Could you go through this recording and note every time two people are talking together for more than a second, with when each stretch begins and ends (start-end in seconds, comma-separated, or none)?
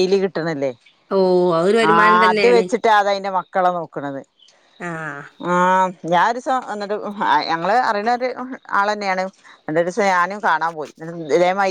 none